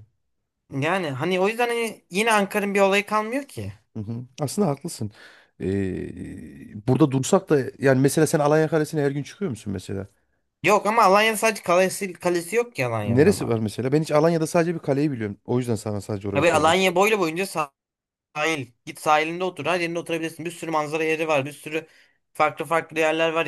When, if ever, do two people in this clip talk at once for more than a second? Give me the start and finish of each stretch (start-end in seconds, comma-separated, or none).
none